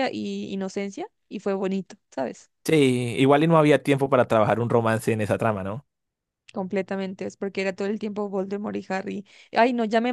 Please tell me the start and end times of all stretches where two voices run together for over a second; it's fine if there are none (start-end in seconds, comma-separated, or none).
none